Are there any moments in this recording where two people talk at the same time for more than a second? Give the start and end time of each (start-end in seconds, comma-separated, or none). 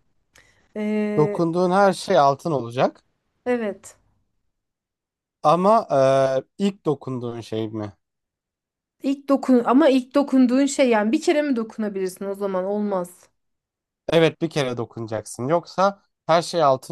none